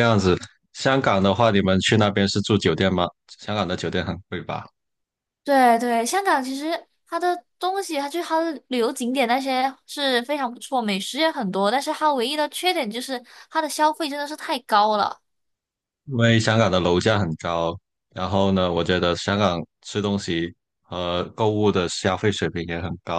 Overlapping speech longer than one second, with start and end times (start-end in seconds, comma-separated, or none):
none